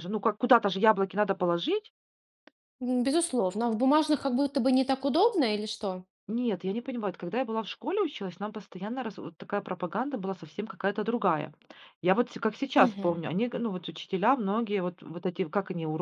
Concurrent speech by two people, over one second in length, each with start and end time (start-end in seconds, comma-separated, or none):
none